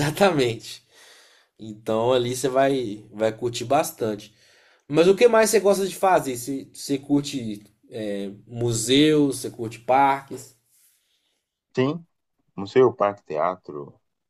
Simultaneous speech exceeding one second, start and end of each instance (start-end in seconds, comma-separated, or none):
none